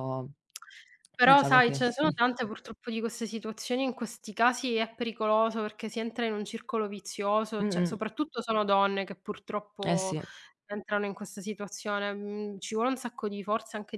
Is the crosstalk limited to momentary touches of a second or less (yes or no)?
yes